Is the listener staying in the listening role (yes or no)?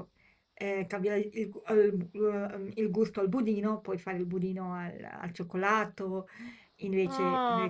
no